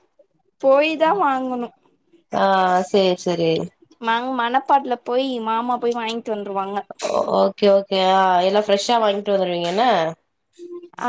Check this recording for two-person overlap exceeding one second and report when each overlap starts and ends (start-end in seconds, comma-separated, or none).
none